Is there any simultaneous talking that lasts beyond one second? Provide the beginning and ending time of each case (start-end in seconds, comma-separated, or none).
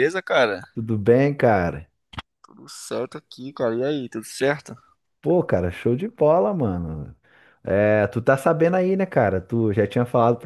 none